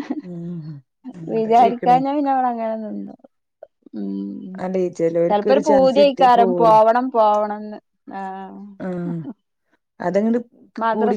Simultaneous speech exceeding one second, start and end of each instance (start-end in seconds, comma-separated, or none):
5.3-6.8